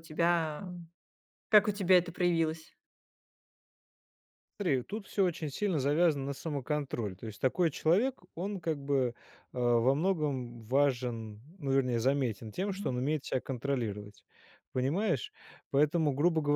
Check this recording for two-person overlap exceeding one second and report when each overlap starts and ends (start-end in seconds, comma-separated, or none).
none